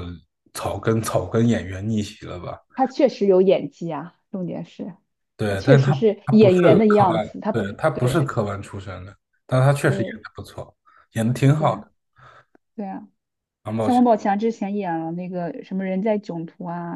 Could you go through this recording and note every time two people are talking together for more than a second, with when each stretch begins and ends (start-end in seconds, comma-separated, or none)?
5.5-8.3